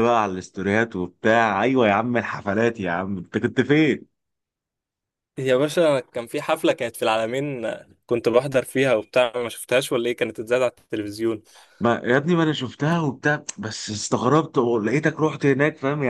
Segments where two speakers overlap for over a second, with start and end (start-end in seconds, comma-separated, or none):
none